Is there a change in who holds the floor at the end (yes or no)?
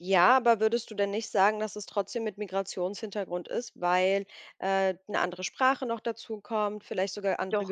no